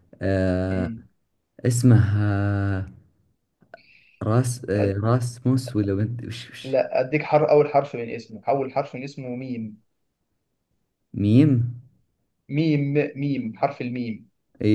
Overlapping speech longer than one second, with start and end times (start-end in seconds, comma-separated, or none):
none